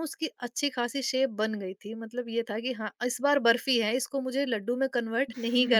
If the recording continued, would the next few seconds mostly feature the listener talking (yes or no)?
yes